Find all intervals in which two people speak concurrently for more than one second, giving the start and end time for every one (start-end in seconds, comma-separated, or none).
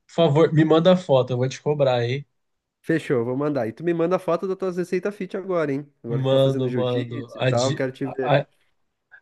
6.1-8.4